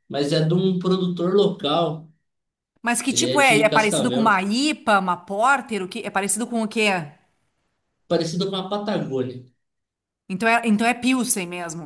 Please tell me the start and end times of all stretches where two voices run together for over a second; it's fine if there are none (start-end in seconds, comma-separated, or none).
3.1-4.4